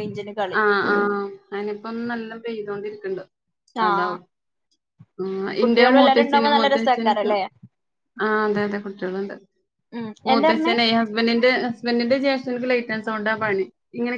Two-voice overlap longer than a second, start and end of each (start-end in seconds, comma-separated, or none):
5.6-7.3